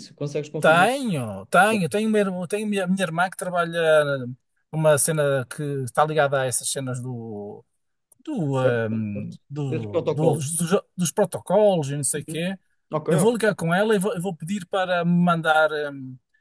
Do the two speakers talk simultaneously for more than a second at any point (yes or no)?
yes